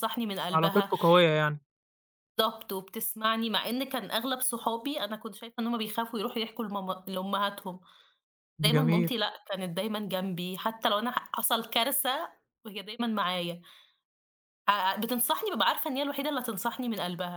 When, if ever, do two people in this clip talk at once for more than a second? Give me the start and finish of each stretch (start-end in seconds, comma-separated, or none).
none